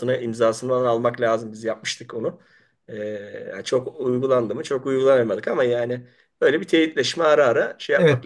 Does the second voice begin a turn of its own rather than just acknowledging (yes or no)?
yes